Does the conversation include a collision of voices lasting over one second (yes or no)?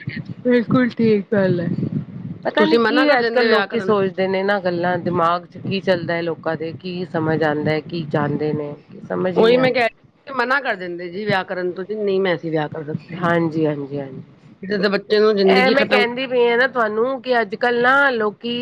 yes